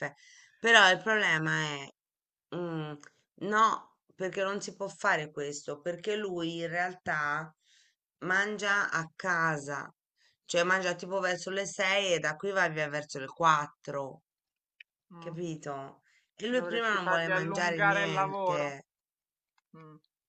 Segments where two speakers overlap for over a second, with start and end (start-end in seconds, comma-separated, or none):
16.5-18.8